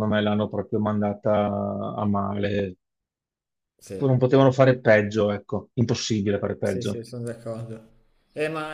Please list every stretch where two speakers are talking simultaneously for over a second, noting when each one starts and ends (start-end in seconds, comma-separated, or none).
none